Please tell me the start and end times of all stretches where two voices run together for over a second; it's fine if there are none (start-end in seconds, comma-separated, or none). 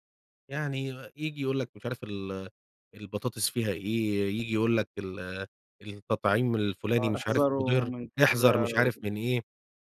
7.0-8.9